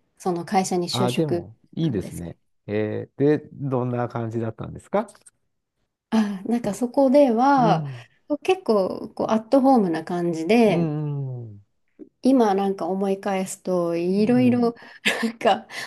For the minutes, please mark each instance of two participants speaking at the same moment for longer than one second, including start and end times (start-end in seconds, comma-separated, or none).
0.9-2.4